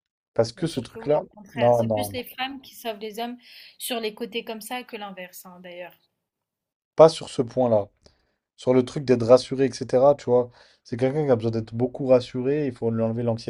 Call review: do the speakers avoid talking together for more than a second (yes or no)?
no